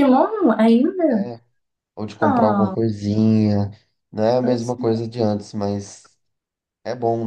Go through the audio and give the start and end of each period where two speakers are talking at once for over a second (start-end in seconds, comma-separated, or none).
none